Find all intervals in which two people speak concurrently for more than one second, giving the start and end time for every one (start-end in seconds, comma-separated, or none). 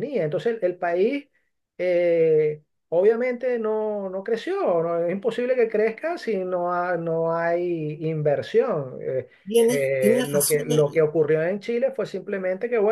9.7-11.0